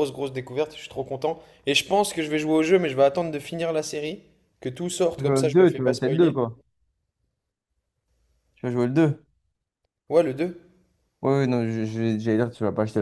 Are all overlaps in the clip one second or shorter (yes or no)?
no